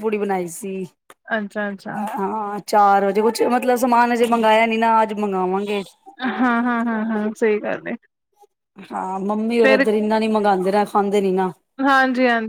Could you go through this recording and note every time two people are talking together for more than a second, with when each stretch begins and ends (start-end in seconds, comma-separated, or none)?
none